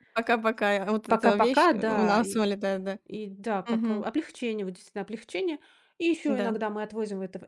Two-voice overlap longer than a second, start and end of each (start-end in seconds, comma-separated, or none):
1.1-2.4